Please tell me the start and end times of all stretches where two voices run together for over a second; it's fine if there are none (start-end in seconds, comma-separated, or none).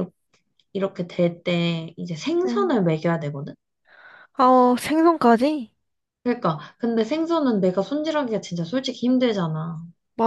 none